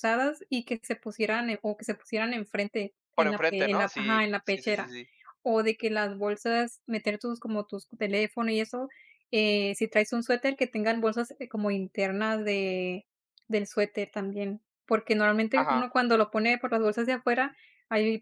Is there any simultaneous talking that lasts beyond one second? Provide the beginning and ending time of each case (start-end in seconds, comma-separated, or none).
3.2-5.0